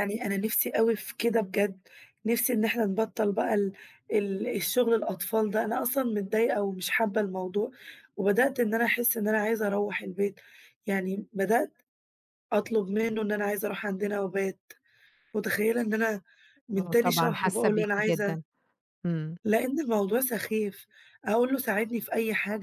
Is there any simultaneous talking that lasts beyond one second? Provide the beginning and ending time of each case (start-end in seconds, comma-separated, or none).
16.8-18.4